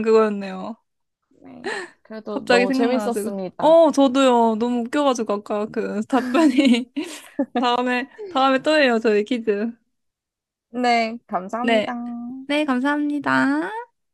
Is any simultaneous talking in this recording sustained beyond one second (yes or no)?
yes